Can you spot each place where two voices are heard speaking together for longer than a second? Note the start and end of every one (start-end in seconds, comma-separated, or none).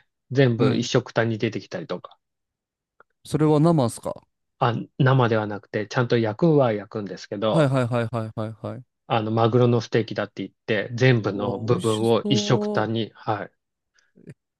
11.3-12.9